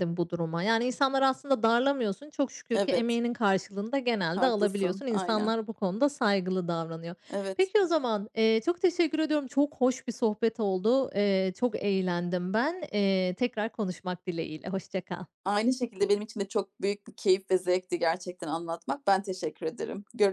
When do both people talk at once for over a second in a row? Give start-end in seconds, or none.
4.3-5.5